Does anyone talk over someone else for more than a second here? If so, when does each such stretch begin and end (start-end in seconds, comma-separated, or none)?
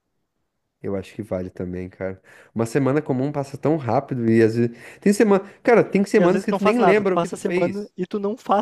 6.1-7.9